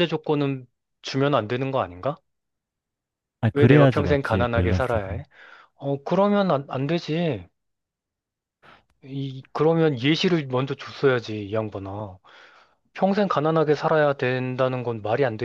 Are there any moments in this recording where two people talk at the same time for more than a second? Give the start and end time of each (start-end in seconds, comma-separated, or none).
3.5-5.2